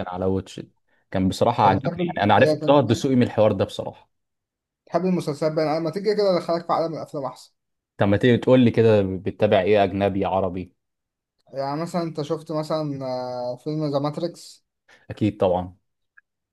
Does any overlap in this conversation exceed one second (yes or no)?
yes